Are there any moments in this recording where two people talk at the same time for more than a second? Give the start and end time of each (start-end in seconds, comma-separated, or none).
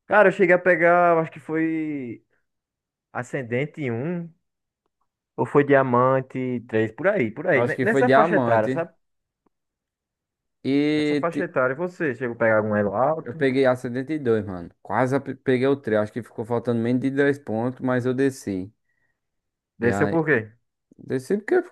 7.5-8.9